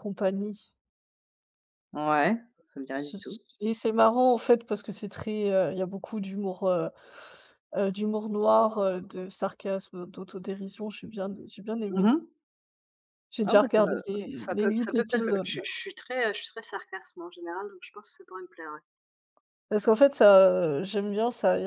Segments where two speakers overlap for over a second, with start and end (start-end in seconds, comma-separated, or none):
13.5-15.6